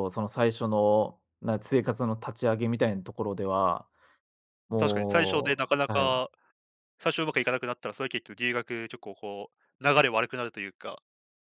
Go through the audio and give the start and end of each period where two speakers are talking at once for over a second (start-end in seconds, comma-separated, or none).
4.8-6.2